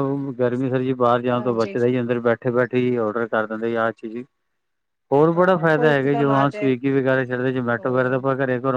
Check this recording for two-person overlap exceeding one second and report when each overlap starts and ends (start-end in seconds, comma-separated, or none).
5.3-6.7